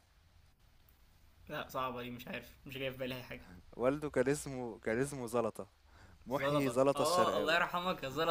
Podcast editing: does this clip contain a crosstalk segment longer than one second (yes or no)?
yes